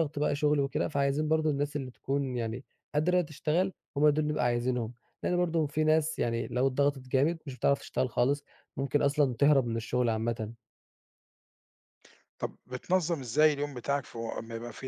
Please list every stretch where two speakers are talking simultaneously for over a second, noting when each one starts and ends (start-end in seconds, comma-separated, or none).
none